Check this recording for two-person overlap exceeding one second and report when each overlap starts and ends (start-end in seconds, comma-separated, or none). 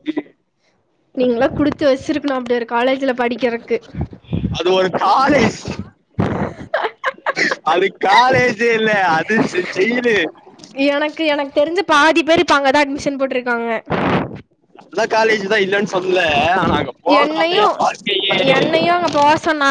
none